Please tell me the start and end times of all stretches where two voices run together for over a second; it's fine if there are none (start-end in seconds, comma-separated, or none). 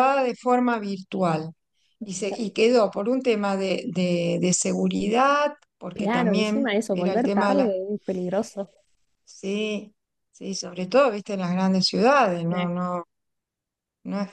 5.9-7.7